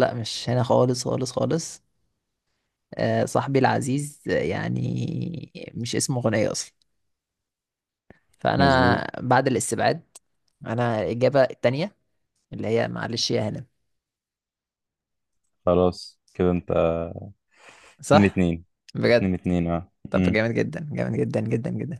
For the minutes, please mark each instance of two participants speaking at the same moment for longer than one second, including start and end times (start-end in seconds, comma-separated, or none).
none